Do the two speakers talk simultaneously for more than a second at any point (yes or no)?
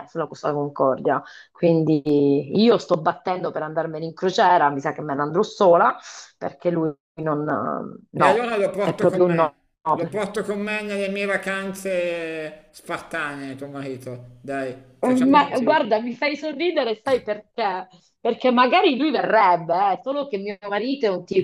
yes